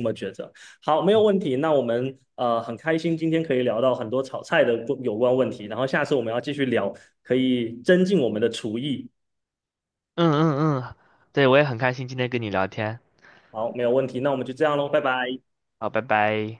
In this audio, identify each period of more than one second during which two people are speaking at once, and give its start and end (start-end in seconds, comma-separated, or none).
none